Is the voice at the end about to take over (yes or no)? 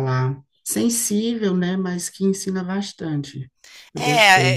yes